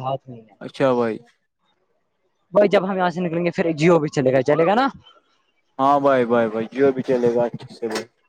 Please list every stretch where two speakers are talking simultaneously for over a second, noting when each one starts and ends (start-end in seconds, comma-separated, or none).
none